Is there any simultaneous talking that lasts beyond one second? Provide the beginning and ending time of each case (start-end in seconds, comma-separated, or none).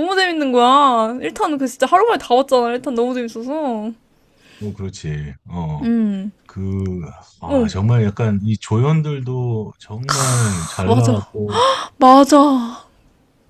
none